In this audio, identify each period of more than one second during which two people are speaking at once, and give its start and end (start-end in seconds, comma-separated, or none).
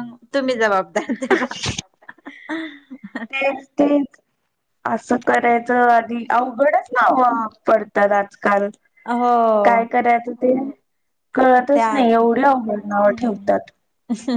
11.7-13.5